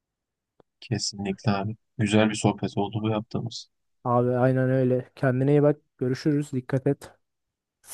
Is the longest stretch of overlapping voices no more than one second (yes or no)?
yes